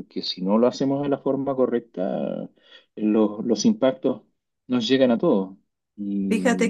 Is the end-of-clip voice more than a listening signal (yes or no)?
yes